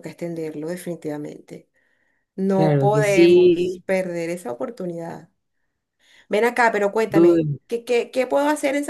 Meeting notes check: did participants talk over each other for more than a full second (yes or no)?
yes